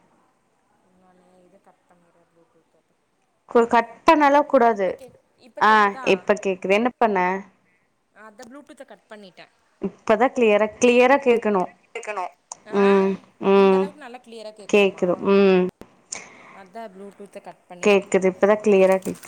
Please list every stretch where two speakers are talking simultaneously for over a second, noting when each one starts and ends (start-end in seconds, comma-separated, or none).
none